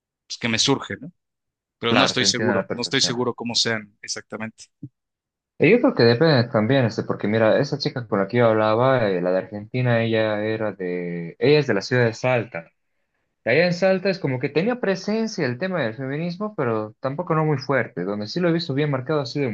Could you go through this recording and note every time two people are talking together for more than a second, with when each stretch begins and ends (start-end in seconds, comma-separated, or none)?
1.9-3.3